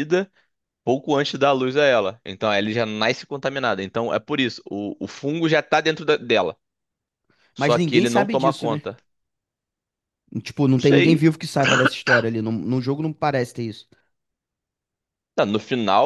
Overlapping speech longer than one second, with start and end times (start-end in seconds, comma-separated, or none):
7.5-8.8